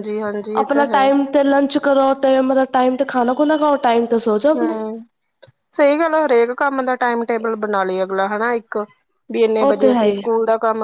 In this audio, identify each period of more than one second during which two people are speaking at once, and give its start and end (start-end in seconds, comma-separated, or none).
none